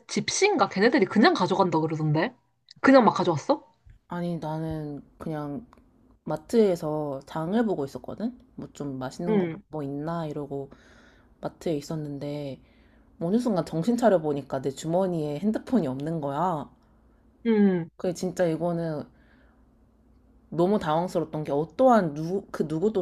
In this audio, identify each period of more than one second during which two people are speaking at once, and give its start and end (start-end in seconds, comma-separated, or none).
none